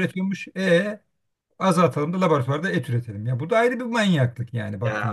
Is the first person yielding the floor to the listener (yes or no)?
yes